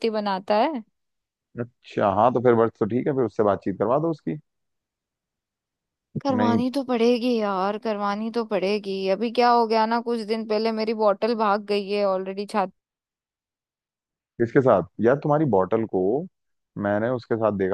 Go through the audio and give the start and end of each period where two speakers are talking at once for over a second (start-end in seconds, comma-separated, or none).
none